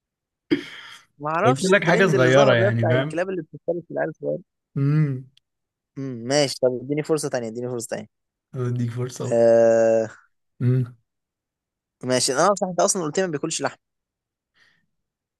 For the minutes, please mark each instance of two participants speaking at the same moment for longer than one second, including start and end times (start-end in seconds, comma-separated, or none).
1.4-3.2